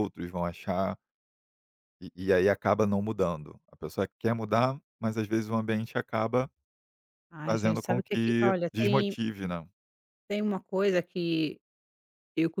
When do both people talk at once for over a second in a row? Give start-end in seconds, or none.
7.5-9.2